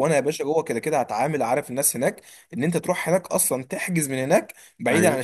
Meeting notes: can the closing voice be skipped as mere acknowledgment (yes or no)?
yes